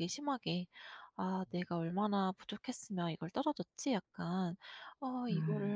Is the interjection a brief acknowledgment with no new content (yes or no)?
yes